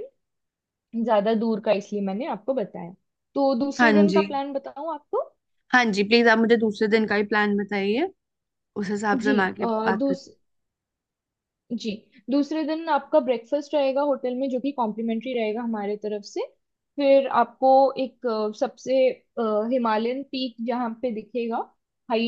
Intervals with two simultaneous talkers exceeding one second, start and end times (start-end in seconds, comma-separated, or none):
none